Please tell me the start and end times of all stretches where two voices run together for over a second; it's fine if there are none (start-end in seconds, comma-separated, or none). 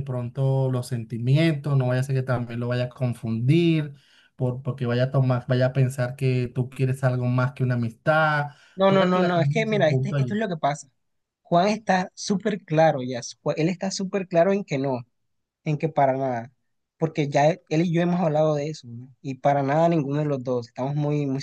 8.9-10.4